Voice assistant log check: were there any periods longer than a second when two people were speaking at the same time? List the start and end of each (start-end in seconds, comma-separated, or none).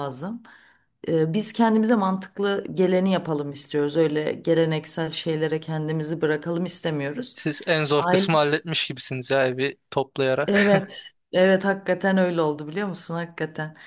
none